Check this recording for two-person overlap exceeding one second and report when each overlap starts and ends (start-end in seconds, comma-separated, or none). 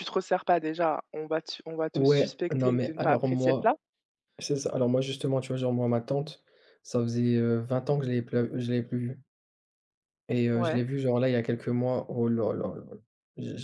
1.9-3.7